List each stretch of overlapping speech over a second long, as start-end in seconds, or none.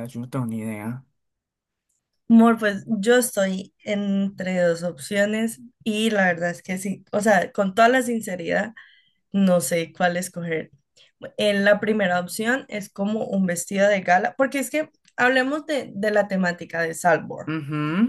none